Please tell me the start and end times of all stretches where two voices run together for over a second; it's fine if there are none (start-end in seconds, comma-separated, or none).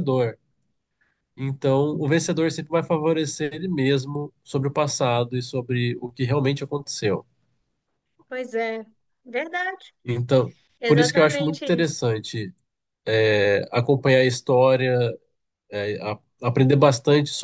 10.8-12.0